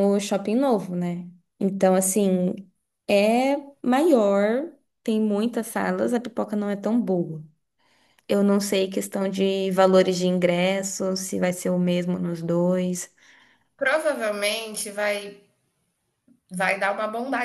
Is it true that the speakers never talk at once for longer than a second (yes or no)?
yes